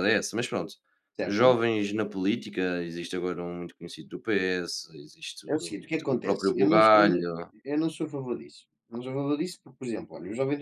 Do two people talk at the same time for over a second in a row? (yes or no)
yes